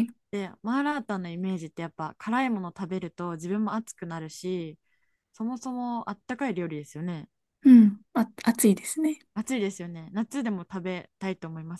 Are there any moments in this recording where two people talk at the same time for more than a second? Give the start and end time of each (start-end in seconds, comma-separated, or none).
none